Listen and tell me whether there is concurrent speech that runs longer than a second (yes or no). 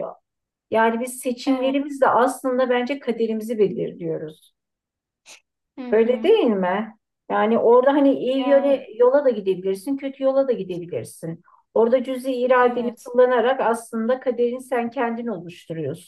no